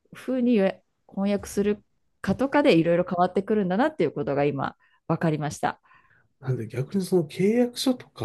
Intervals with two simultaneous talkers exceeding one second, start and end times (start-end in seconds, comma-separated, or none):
none